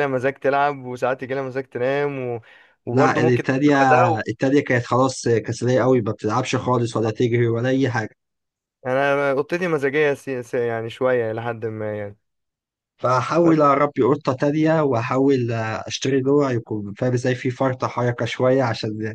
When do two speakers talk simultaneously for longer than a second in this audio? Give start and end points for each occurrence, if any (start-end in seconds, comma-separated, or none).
2.9-4.2